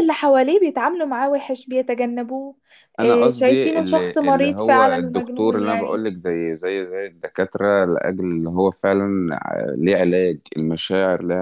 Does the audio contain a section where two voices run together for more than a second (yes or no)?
yes